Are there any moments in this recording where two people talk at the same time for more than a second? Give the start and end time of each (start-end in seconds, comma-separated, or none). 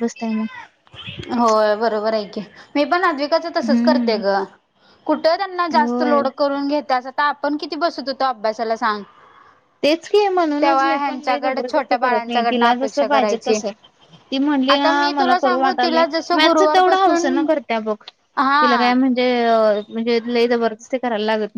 10.6-13.6, 14.7-17.4